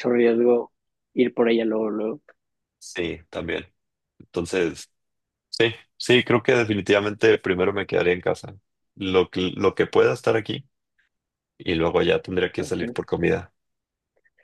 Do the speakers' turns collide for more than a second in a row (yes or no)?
no